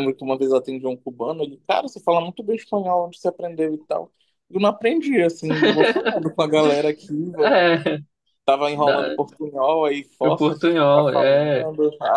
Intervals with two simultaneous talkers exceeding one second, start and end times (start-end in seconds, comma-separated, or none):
10.3-11.6